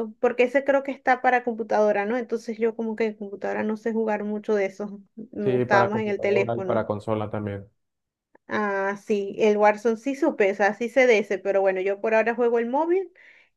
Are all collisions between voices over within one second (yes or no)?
no